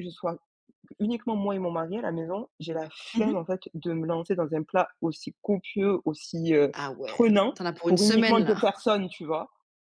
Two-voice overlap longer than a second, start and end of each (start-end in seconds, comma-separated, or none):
6.7-8.7